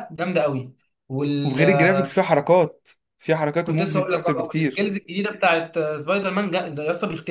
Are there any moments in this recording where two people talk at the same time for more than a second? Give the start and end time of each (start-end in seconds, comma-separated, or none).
3.6-4.9